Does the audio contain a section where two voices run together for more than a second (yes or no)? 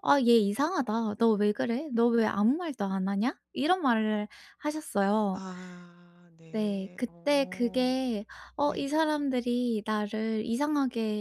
yes